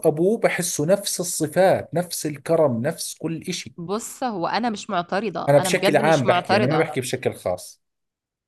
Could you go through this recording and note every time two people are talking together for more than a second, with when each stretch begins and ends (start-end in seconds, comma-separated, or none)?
5.5-6.9